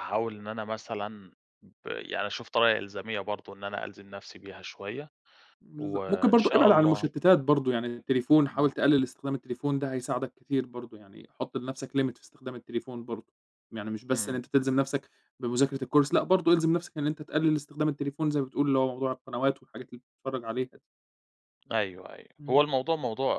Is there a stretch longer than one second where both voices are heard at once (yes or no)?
yes